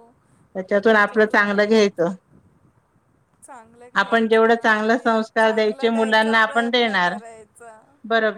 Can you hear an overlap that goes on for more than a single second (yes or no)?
yes